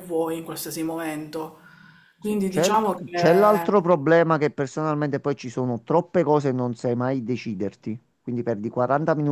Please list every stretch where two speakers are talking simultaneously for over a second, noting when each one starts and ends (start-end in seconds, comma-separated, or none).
2.2-3.7